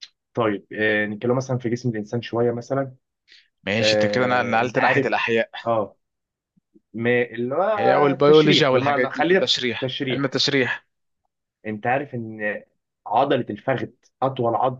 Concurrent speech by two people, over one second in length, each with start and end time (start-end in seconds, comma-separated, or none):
3.8-5.2, 8.1-10.4